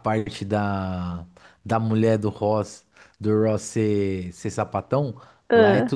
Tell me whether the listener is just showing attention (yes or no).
yes